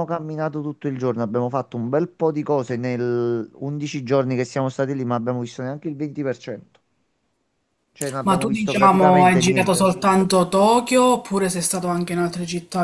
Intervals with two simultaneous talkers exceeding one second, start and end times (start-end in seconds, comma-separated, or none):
8.2-9.9